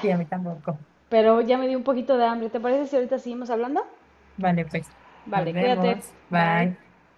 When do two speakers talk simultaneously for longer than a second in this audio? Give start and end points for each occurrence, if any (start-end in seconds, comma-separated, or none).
5.3-6.7